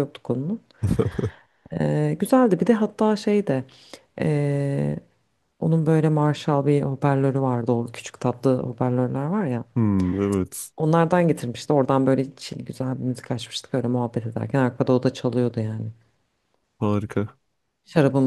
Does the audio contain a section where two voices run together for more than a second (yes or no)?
no